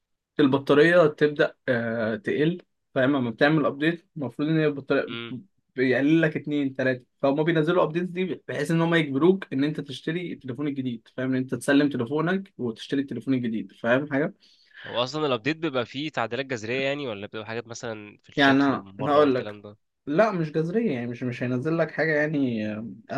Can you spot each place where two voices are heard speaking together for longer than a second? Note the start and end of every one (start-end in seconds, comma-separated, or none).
18.4-19.6